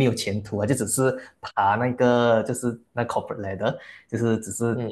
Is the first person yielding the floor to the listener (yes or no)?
no